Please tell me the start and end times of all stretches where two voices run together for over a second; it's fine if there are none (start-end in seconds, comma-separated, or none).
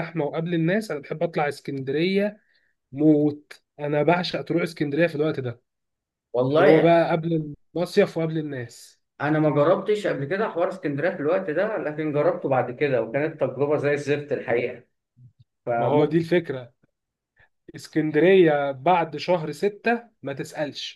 none